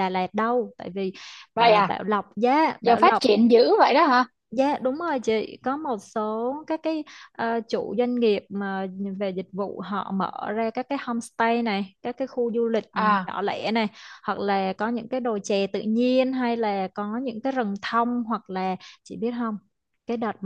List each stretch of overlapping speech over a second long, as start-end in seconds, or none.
none